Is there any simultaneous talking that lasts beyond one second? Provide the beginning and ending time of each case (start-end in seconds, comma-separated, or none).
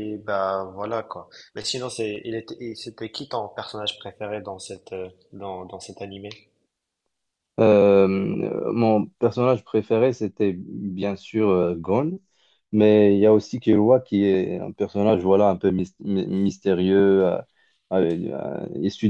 none